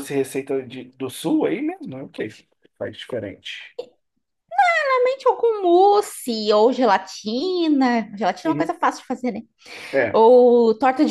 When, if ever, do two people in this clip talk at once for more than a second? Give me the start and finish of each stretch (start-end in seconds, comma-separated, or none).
none